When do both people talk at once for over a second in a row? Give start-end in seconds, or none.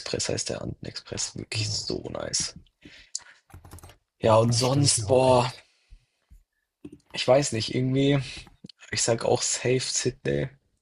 4.2-5.5